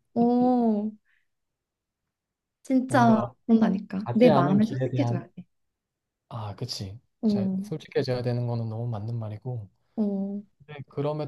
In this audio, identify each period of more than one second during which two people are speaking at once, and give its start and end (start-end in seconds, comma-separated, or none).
4.0-5.3